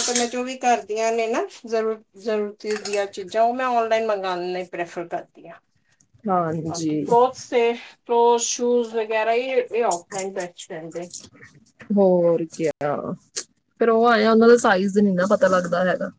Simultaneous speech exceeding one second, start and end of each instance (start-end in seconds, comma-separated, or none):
none